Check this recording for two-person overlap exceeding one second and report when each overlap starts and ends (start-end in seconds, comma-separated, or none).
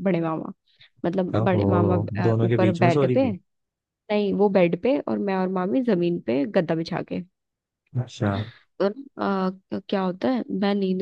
1.4-3.3